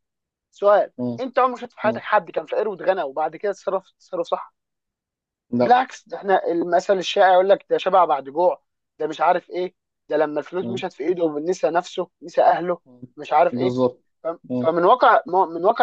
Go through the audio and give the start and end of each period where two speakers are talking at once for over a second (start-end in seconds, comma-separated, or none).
none